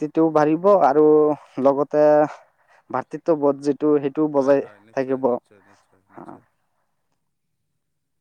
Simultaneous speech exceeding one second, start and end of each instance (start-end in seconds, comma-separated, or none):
4.3-6.3